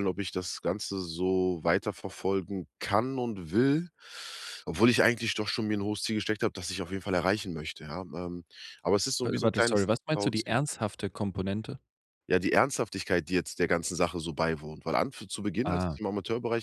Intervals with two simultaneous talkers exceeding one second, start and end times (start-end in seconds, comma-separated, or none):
9.2-10.6